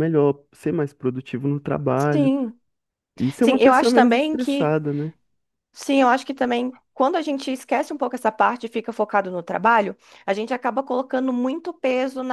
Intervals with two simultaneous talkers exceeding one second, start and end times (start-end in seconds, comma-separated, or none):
3.4-4.8